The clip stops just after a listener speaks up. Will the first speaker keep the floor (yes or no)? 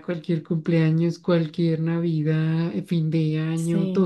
yes